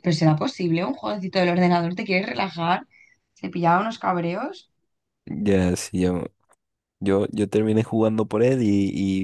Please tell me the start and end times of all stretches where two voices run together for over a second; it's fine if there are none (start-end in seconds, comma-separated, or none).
none